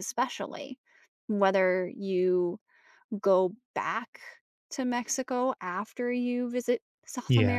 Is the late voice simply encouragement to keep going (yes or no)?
yes